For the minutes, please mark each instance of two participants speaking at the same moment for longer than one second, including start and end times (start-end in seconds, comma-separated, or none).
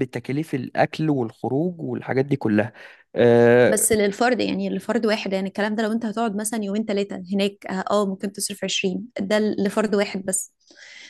none